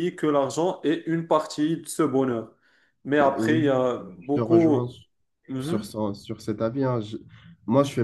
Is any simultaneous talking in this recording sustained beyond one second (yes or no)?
yes